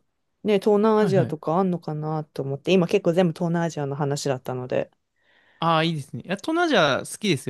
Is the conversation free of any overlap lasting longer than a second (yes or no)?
yes